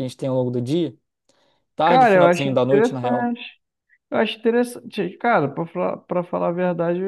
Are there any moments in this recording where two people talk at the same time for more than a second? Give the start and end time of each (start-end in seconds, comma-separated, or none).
1.8-3.4